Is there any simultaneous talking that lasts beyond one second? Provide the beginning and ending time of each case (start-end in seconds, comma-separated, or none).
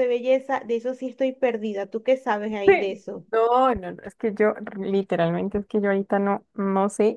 none